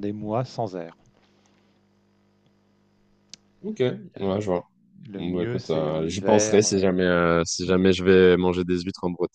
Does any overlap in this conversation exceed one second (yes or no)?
yes